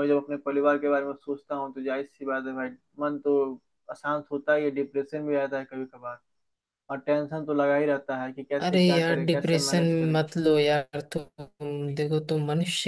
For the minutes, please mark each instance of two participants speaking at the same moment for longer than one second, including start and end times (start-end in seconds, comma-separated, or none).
8.6-10.2